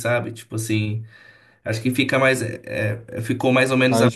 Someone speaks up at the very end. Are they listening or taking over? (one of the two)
listening